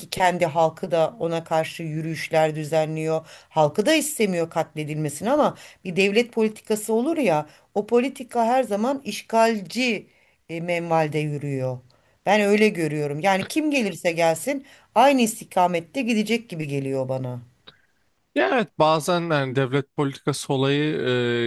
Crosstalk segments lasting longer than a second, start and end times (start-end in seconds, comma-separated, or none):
none